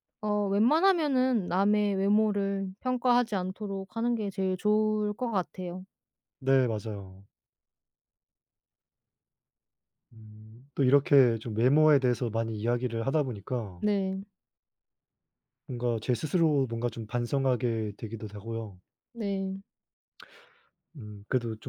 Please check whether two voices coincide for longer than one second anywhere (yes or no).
no